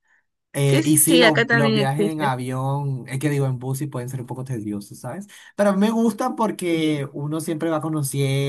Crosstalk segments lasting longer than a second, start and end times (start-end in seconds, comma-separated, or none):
0.7-2.3